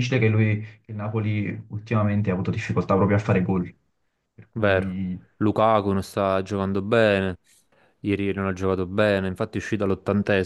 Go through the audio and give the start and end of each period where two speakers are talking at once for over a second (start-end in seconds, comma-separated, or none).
none